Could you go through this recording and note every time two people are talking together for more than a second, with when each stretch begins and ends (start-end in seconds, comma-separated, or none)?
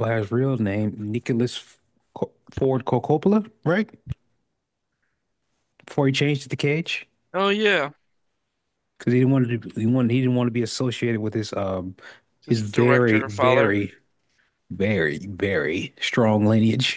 12.4-13.8